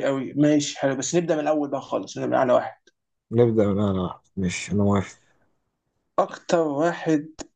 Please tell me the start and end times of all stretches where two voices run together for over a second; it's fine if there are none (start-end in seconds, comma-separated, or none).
none